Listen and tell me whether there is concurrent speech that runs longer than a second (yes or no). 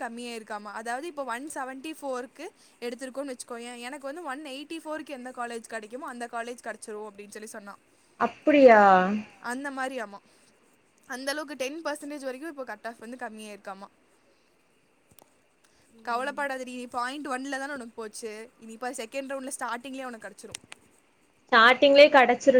no